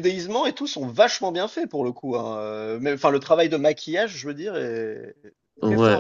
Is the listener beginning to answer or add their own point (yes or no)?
yes